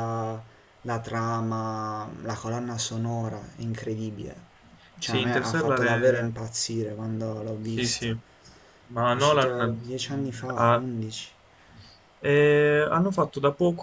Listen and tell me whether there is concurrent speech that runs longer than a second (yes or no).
yes